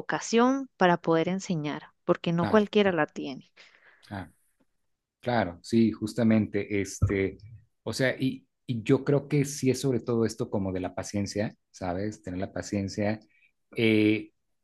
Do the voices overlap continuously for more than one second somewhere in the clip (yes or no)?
no